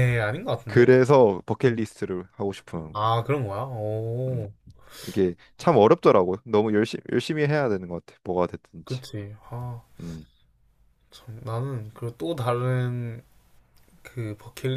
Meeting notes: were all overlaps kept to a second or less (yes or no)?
yes